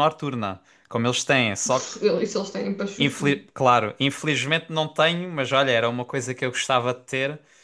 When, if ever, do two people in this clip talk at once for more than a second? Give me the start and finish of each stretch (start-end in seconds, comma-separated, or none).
none